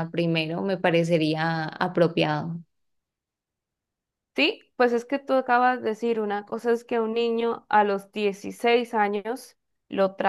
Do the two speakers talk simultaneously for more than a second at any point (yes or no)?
no